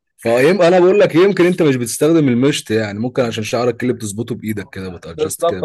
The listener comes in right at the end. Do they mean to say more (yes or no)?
yes